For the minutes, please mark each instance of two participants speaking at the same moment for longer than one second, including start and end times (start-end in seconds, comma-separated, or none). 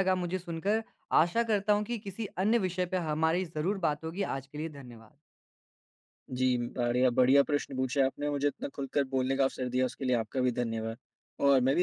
none